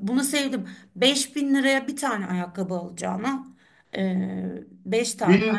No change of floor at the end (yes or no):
no